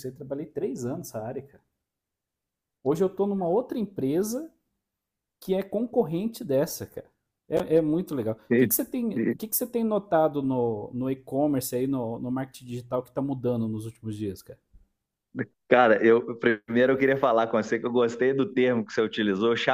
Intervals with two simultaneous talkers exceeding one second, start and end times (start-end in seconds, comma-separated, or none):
none